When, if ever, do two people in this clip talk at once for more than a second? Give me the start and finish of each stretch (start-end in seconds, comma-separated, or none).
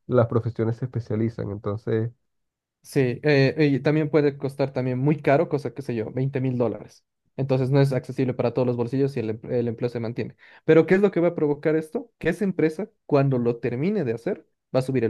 none